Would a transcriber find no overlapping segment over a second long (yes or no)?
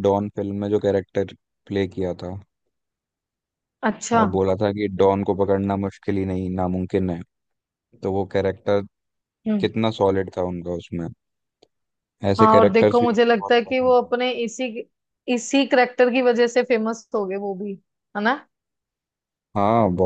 no